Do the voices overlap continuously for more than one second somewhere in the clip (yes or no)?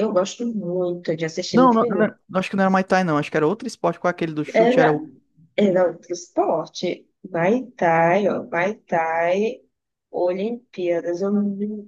no